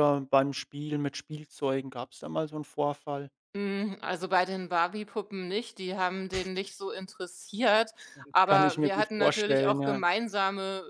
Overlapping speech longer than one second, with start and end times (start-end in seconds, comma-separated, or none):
8.4-10.0